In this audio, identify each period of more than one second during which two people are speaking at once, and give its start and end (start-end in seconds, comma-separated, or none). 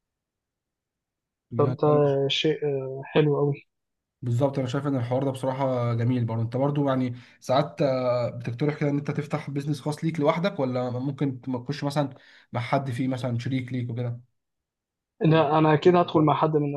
none